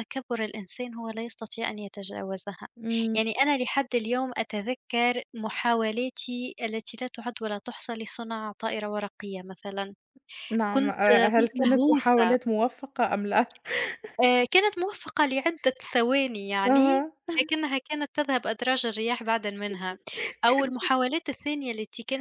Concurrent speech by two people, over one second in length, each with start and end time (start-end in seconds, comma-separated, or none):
10.7-12.3